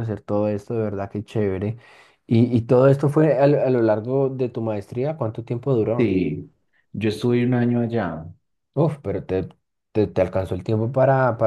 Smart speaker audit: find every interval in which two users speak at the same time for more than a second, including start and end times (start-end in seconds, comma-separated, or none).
none